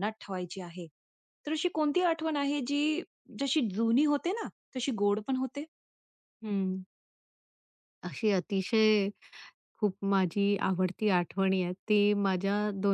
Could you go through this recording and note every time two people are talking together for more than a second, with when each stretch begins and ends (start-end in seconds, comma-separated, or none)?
none